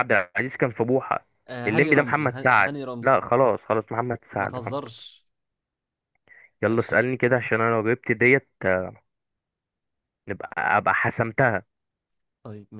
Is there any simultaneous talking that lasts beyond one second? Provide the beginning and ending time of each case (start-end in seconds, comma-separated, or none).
1.7-3.2